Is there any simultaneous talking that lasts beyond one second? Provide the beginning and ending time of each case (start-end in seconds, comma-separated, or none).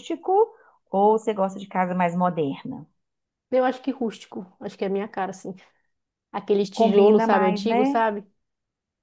6.7-8.0